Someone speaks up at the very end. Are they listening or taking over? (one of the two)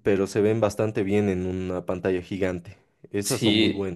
taking over